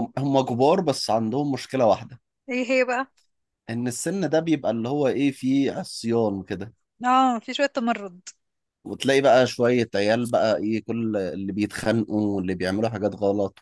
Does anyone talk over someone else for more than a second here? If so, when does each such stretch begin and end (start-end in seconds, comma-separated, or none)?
none